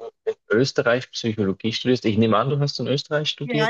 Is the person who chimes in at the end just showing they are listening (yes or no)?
no